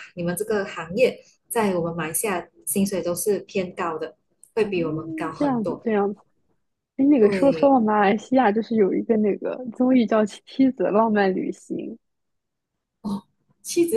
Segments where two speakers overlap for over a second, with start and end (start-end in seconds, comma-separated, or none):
none